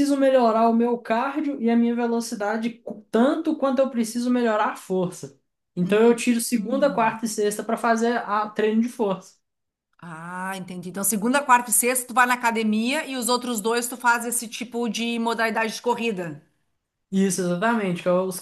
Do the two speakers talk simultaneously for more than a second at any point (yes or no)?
yes